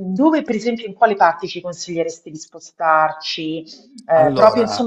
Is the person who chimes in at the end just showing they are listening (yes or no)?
yes